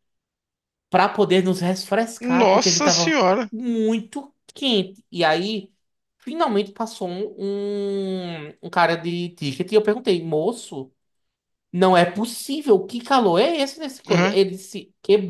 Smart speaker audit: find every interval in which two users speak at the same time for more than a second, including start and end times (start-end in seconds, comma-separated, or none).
2.2-3.5